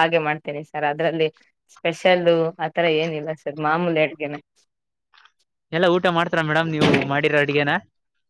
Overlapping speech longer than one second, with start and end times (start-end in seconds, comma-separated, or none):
none